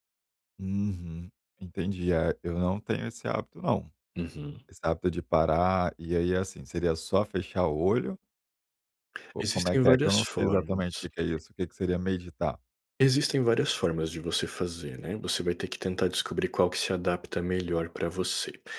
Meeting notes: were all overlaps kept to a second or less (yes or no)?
no